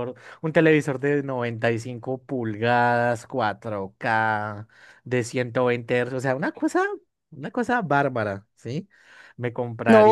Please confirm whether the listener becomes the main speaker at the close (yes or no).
yes